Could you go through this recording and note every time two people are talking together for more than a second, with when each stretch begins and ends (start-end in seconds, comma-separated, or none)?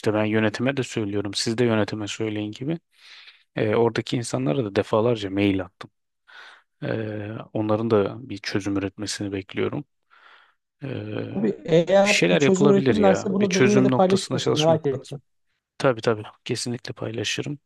12.0-15.1